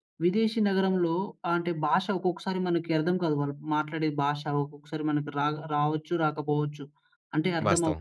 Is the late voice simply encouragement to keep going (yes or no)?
yes